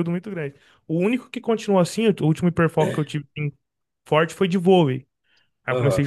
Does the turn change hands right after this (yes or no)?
no